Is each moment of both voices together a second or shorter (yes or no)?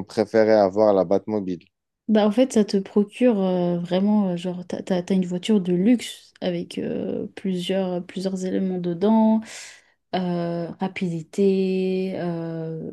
yes